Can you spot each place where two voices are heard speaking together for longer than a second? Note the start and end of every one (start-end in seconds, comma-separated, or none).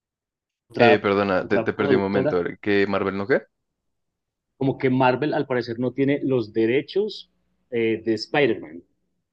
0.8-2.4